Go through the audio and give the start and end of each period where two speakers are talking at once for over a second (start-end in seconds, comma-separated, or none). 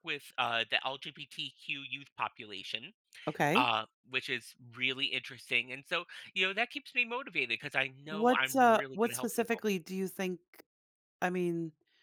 8.1-9.6